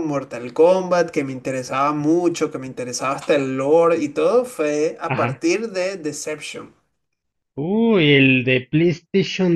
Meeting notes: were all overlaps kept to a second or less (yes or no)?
yes